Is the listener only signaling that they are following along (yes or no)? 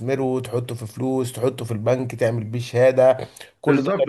no